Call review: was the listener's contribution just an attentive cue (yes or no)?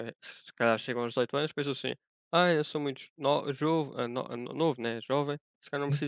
yes